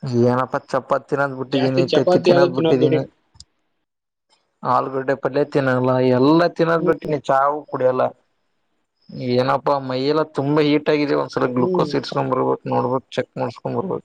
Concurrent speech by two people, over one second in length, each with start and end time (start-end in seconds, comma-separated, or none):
1.6-3.0